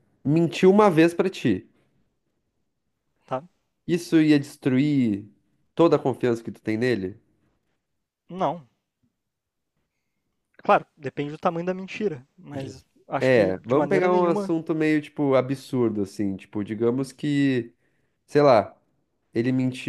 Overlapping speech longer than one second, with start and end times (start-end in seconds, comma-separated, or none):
13.2-14.5